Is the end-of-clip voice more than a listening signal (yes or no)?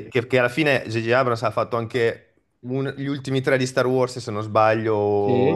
yes